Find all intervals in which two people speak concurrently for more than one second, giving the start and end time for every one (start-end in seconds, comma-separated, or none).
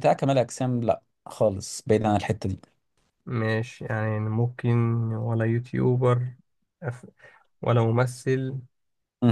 none